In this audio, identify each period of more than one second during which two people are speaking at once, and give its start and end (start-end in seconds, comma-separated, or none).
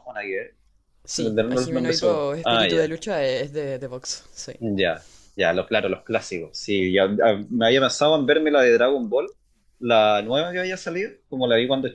1.1-3.0